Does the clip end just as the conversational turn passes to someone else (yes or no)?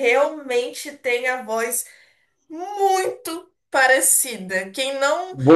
no